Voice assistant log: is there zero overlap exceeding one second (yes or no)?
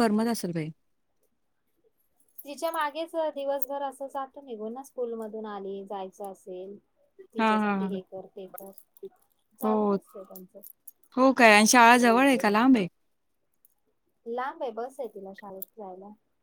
yes